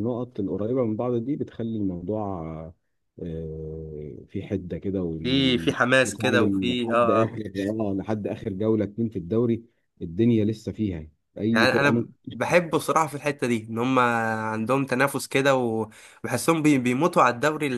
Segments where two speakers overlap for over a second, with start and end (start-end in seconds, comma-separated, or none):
6.0-7.4, 11.5-12.8